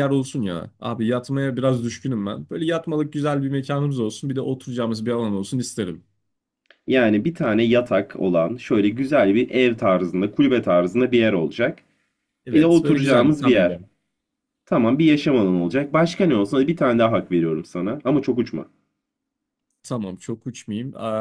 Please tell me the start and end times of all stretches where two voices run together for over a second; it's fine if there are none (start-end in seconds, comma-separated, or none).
12.5-13.8